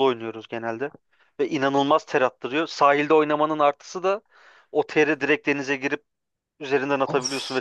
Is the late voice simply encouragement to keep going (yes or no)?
yes